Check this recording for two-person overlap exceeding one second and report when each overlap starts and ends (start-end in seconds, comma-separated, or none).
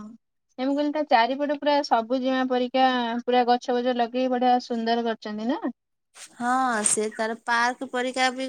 none